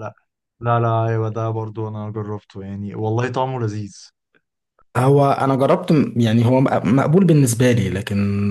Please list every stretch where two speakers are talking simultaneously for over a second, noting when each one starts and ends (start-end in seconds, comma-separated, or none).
none